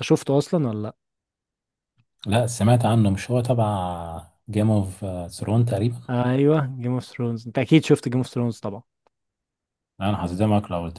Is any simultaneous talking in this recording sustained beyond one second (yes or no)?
no